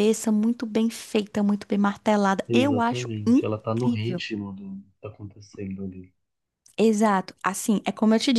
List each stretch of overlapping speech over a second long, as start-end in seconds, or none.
2.5-4.2